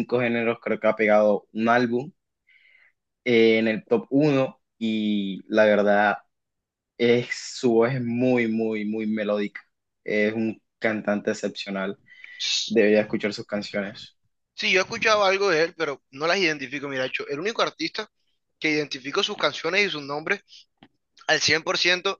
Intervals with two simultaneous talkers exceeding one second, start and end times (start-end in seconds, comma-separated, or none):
none